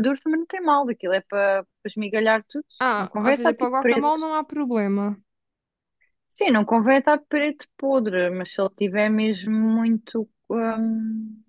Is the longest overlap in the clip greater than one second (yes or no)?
yes